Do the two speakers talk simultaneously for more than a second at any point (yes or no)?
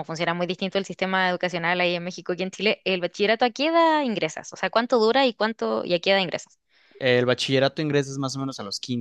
no